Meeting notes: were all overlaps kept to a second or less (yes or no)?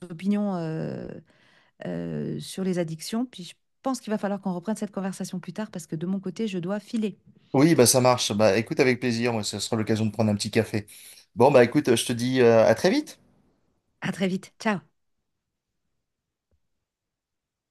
yes